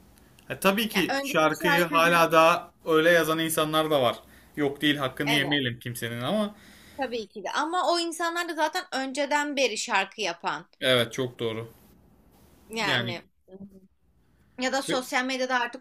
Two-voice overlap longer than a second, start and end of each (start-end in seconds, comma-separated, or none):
0.9-2.3